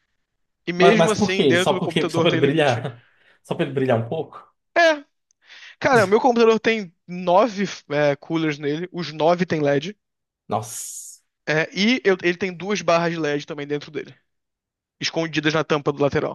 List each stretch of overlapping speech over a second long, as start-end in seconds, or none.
0.8-2.9